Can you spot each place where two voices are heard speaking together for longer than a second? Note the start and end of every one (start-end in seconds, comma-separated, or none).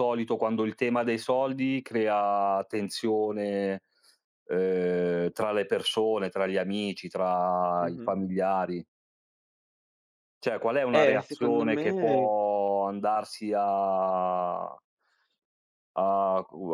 10.9-12.3